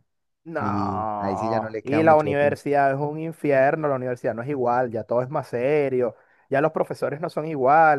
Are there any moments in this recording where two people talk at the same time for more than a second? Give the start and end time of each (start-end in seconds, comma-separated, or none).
0.6-2.6